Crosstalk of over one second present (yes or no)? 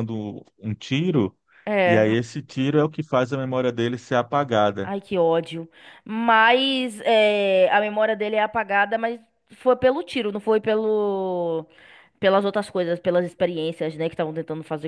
no